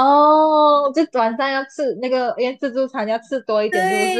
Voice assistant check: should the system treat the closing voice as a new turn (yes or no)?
yes